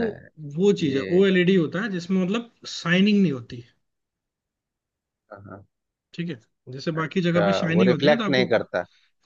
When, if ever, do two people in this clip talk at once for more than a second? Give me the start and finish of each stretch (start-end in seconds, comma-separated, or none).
7.0-8.4